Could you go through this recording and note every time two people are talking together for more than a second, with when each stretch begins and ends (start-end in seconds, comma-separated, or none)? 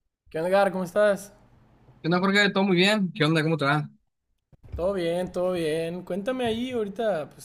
none